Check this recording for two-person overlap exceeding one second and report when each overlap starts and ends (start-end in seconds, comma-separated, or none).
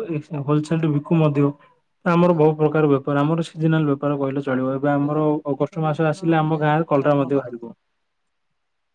5.0-7.7